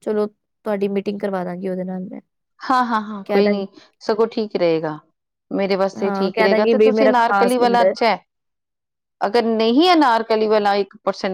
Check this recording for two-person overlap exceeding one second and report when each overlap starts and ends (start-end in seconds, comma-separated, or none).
6.0-7.9